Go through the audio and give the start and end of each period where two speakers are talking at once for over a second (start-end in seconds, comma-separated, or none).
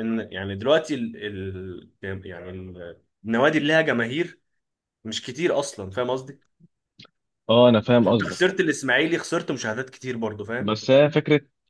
none